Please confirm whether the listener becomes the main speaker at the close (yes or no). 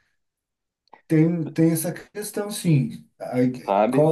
no